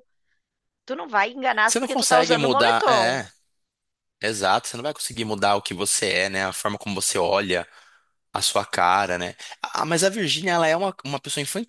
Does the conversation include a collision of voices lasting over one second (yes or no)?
yes